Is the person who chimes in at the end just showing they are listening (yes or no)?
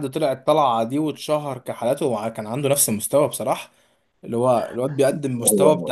yes